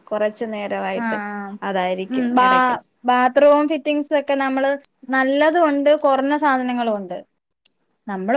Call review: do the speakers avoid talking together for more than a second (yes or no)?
yes